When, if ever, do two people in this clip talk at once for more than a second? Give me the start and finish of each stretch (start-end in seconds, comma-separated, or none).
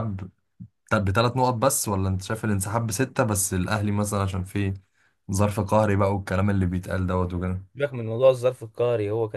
none